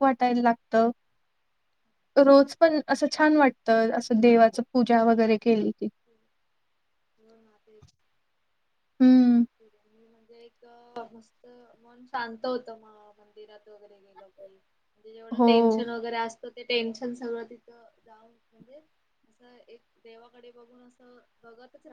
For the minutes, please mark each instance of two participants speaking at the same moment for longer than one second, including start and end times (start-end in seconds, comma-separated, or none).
none